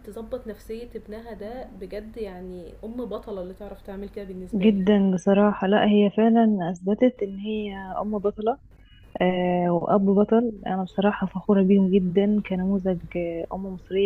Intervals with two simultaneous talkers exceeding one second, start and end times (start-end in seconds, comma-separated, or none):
none